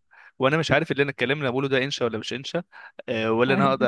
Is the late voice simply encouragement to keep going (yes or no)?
yes